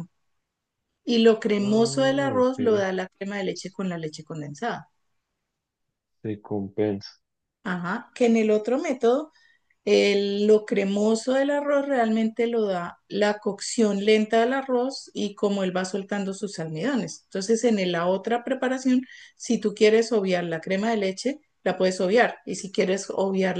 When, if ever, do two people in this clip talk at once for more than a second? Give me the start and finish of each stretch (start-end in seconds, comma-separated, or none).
1.6-2.9